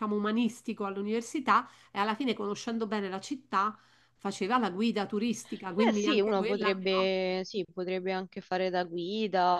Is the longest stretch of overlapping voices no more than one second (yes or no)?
no